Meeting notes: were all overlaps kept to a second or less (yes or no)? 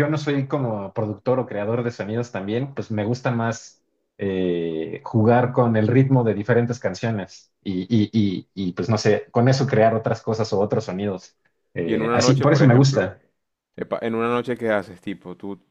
no